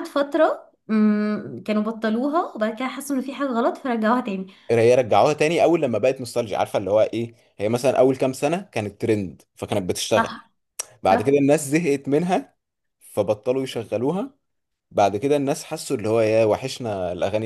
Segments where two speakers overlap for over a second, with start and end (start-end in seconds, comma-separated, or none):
none